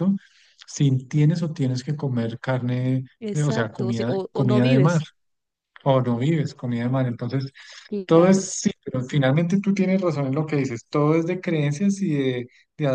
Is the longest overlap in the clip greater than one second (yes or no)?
yes